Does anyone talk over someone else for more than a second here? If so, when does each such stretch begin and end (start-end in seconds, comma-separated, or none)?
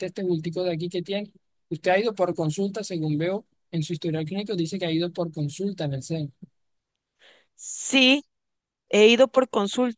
none